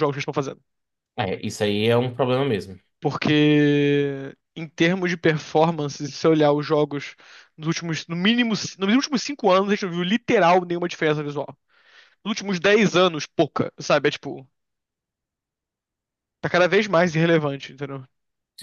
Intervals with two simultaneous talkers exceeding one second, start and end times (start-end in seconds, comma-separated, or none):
none